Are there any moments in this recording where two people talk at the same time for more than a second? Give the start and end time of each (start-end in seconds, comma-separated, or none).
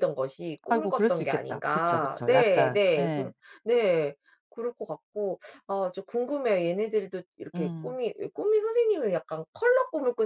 0.7-3.3